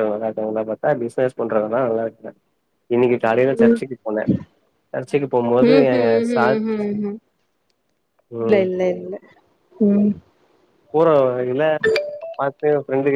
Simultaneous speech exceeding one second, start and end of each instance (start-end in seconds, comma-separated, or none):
none